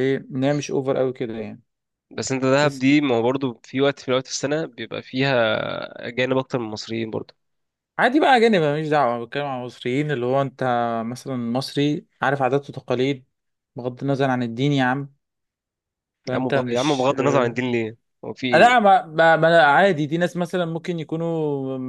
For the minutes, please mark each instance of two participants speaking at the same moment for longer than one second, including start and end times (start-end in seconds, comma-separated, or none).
16.3-17.6